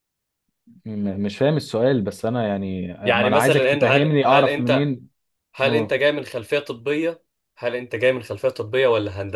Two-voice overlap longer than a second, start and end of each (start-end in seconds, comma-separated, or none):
3.0-4.9